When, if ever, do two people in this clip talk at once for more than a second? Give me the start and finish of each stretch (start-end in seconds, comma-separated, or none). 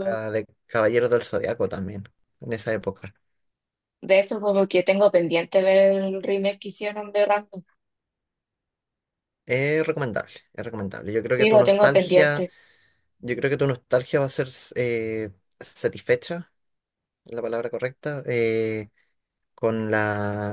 11.2-12.5